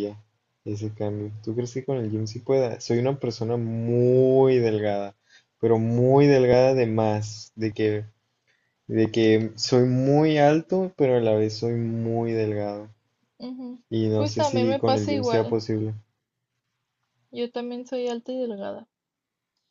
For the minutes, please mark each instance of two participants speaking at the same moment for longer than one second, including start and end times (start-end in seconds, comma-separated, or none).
13.9-15.6